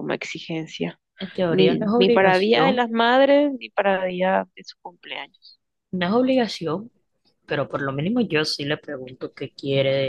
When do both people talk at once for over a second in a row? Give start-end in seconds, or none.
1.5-2.9